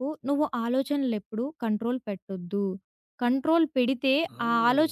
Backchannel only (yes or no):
yes